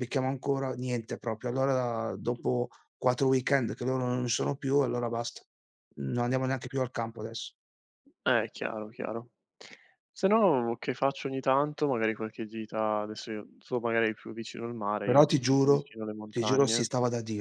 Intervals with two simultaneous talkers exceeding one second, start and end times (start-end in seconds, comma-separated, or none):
15.0-16.9